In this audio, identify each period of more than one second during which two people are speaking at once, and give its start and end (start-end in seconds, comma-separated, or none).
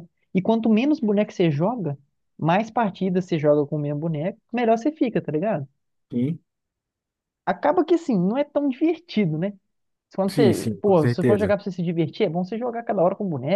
10.3-11.6